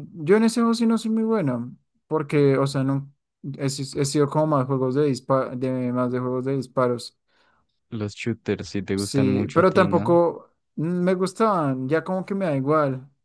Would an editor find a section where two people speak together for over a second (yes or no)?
yes